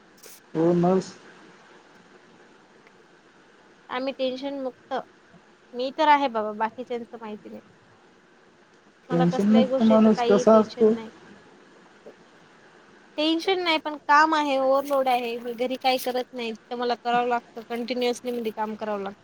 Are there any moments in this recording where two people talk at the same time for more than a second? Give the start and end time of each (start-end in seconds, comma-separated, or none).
9.1-10.9